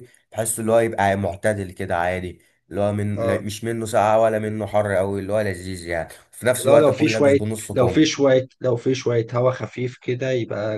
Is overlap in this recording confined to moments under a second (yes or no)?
no